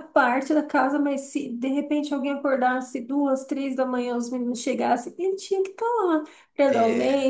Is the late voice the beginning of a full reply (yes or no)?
no